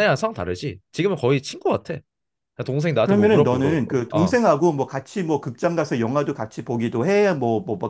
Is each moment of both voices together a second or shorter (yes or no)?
no